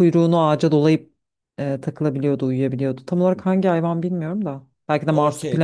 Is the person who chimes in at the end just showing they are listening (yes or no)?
no